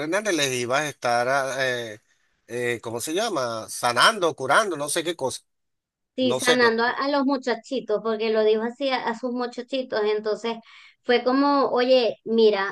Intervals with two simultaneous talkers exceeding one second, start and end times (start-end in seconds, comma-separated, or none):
none